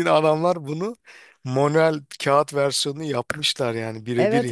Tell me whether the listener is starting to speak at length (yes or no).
yes